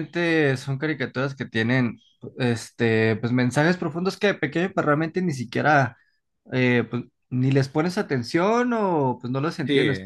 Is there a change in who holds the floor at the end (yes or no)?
no